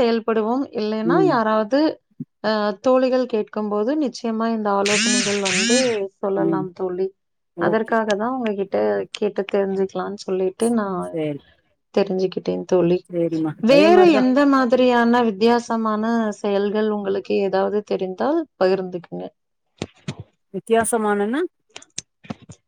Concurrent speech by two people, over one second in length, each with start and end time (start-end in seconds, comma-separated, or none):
none